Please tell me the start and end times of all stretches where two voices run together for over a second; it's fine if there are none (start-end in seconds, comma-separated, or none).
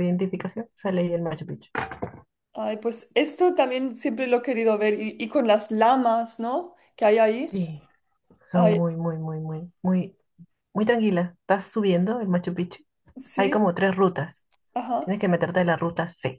none